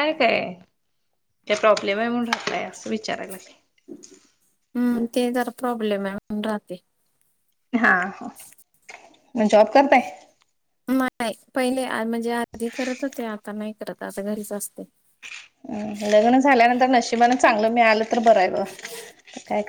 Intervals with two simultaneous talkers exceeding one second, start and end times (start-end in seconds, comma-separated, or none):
none